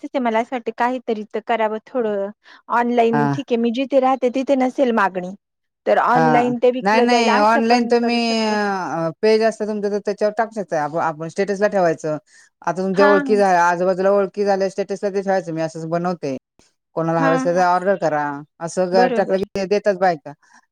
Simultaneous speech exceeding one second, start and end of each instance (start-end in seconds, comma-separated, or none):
6.2-8.2